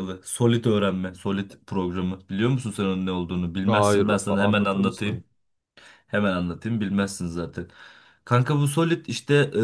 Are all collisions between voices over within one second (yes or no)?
no